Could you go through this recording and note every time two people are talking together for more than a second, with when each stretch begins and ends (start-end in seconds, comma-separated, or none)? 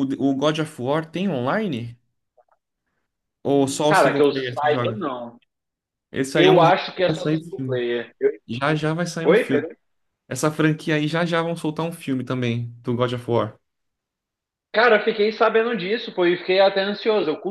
3.5-5.0, 6.3-7.9